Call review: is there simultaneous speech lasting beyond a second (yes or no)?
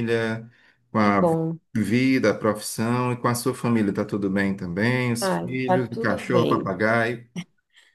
yes